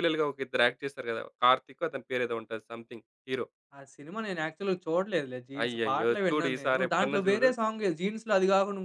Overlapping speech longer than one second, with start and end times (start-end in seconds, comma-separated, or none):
5.6-7.5